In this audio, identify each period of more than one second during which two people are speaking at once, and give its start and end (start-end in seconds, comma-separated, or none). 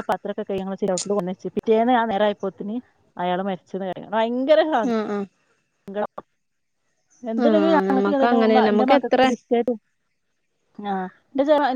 7.4-9.2